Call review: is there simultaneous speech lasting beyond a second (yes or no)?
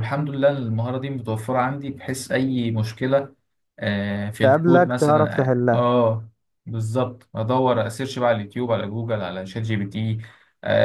yes